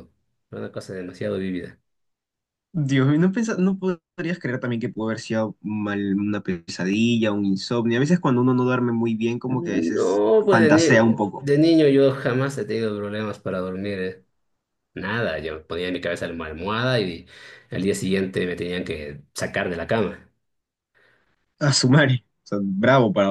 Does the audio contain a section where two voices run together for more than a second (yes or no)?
yes